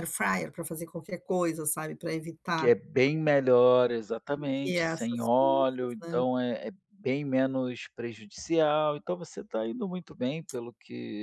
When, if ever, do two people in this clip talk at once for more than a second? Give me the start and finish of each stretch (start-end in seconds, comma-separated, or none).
4.6-6.2